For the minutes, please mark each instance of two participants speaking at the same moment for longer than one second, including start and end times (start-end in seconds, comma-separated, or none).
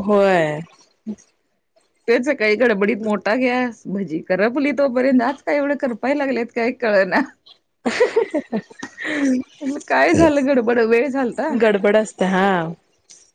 10.2-11.5